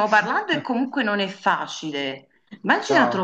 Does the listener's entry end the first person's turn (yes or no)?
no